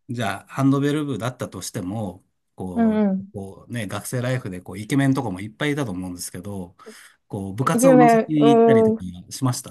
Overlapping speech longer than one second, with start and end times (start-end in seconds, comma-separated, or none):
7.6-9.0